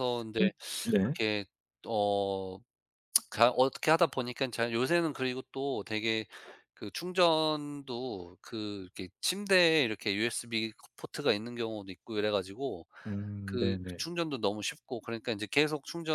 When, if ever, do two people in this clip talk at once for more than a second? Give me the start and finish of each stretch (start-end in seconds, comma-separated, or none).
none